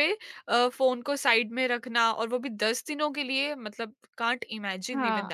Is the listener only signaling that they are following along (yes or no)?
yes